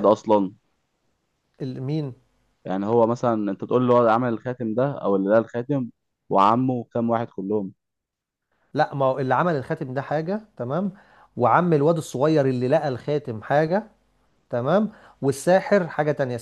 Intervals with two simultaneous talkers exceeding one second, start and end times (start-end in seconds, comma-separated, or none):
none